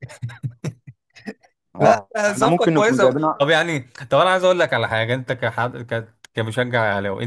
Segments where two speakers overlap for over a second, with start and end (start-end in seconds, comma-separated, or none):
1.8-3.5